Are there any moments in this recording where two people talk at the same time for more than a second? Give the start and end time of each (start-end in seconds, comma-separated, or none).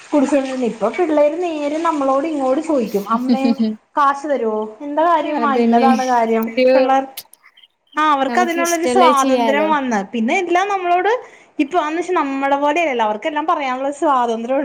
8.3-9.7